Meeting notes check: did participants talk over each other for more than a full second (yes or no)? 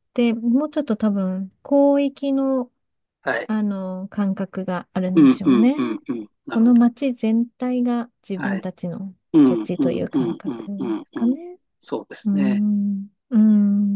yes